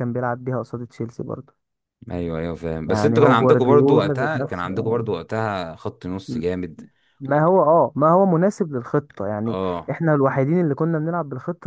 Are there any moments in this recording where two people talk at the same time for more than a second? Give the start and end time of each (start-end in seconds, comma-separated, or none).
2.9-4.7